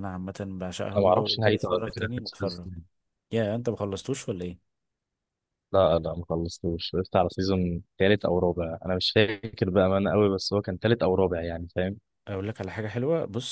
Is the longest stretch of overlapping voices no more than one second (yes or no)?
no